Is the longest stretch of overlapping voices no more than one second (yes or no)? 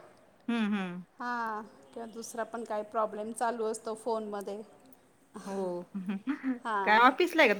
yes